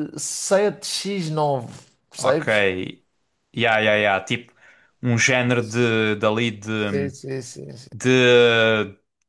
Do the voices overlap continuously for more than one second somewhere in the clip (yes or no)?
no